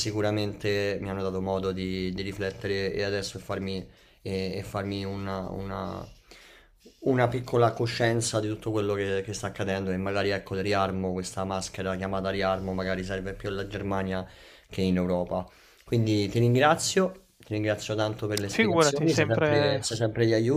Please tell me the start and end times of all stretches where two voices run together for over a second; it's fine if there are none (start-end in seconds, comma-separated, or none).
18.5-20.0